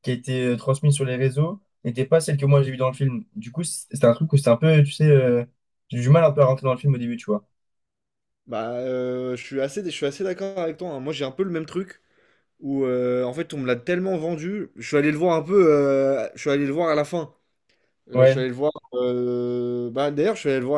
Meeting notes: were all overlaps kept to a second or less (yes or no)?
yes